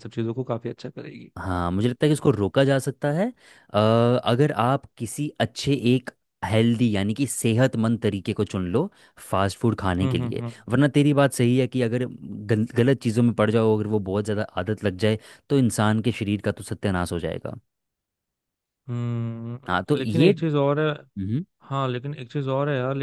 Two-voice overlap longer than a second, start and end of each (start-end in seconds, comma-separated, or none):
none